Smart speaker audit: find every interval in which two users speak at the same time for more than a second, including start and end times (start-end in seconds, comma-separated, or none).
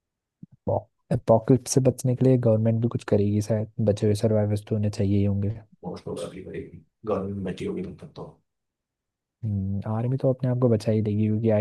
none